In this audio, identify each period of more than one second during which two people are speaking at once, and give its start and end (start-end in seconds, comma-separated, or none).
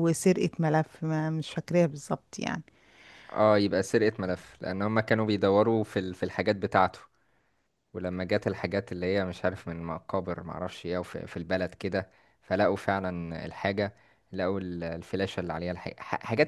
none